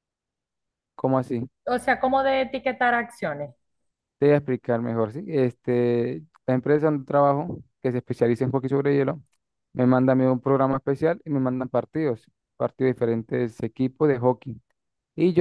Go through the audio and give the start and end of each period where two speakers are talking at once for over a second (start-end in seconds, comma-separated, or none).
none